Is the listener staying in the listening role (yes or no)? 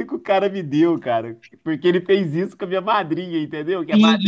no